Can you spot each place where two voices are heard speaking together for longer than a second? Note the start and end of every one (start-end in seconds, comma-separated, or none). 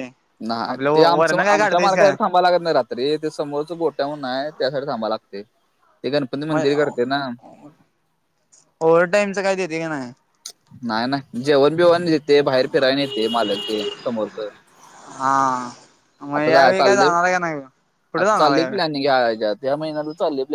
0.7-2.1